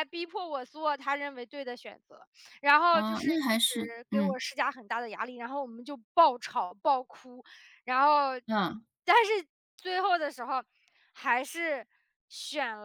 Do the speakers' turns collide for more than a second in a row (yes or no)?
yes